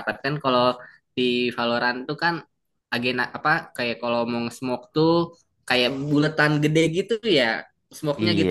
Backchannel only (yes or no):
no